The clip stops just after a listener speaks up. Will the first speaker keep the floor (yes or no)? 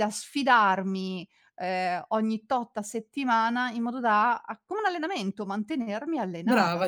no